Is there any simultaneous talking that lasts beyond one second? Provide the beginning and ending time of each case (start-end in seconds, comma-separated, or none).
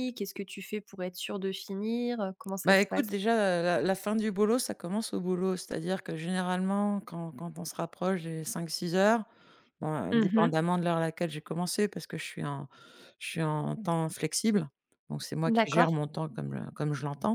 none